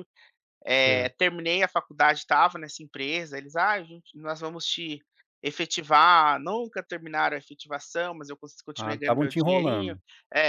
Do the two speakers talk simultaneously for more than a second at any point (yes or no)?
yes